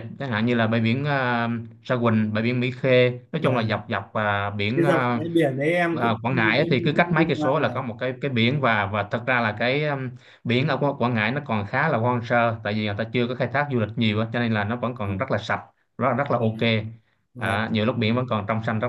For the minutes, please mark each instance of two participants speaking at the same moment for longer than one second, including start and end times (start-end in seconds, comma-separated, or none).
6.0-7.7